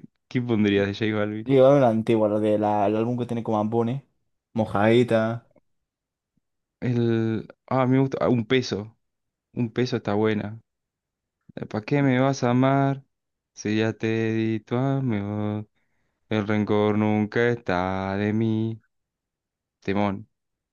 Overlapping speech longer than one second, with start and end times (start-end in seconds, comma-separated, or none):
none